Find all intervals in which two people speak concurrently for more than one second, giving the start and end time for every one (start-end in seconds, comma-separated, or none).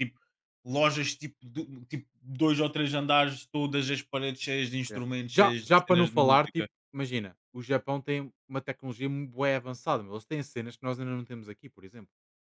4.9-6.7